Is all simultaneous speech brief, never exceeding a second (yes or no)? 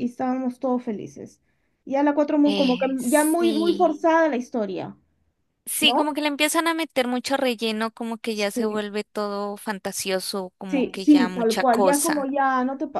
no